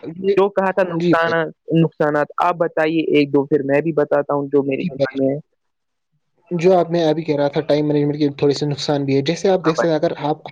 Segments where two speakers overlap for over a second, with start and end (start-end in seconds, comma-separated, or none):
none